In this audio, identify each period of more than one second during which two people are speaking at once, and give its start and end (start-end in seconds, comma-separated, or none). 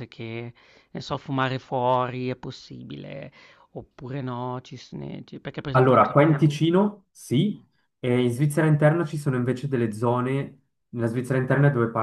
none